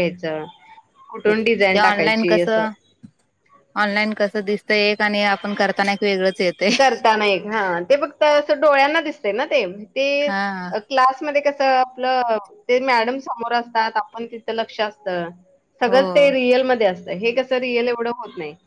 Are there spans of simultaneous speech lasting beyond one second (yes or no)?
no